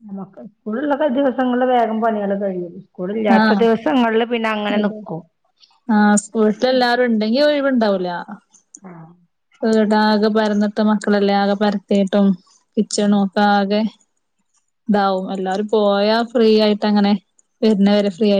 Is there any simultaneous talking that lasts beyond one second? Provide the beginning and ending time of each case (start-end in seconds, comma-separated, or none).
none